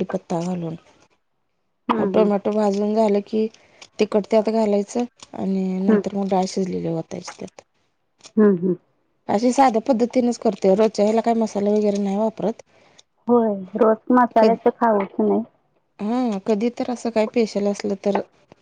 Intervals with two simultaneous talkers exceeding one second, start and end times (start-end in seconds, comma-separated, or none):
none